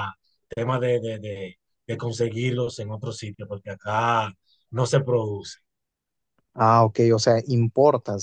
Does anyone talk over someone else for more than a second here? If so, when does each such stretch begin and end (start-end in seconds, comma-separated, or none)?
none